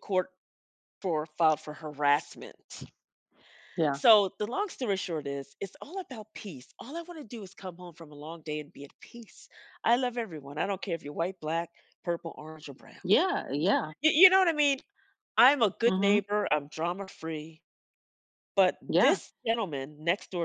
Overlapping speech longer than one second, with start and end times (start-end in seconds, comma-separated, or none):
none